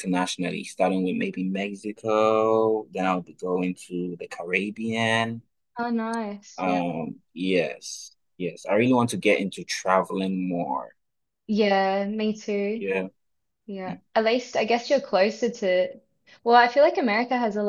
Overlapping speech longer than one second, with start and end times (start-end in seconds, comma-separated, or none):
none